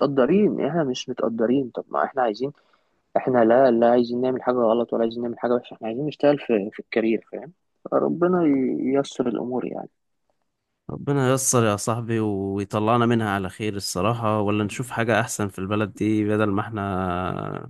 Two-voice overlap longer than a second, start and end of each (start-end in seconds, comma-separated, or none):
none